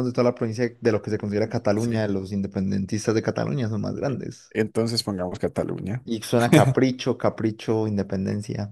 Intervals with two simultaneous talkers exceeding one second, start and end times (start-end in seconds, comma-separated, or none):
none